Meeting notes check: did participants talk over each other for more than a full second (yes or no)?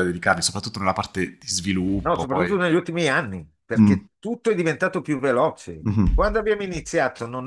no